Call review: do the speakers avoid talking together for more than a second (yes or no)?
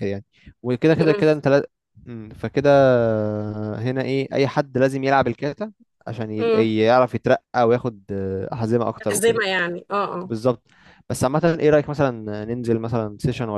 yes